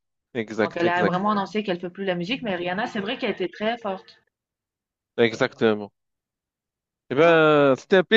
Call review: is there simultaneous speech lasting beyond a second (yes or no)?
no